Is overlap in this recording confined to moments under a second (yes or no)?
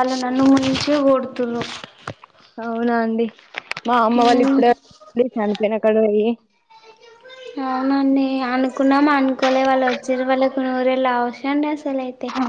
yes